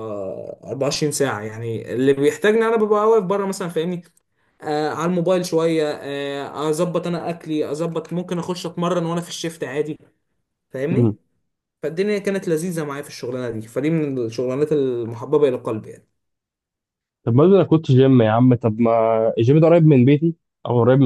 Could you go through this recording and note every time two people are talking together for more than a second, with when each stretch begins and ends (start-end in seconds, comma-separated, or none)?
none